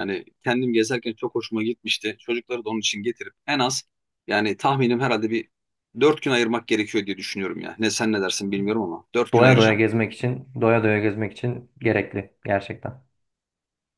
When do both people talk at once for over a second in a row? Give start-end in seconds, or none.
none